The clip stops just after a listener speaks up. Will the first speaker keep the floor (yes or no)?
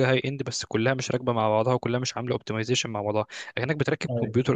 yes